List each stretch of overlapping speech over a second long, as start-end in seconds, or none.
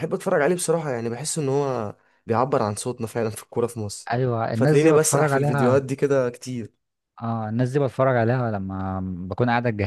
4.5-5.8